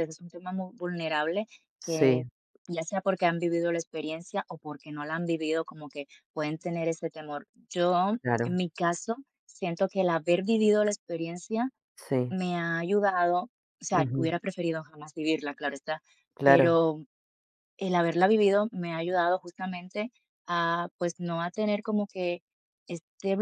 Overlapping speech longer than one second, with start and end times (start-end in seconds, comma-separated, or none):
none